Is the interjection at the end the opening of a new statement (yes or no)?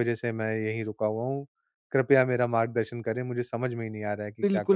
yes